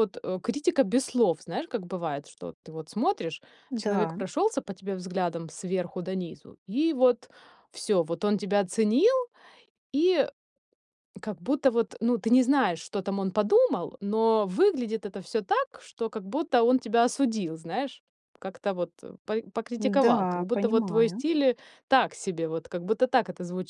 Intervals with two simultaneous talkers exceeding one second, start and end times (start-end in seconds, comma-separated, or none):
19.8-21.2